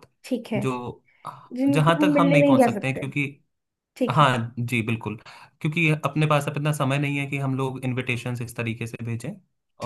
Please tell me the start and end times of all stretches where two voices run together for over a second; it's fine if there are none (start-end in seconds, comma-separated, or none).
1.7-3.0